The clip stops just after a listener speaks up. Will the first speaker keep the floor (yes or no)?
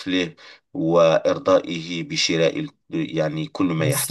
no